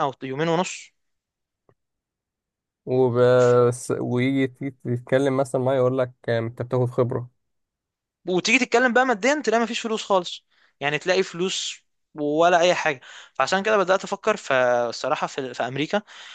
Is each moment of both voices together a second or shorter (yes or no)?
yes